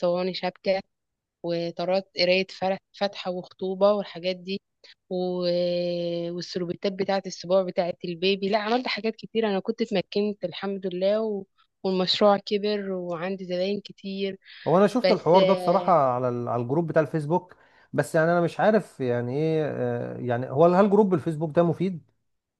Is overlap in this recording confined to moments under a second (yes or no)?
yes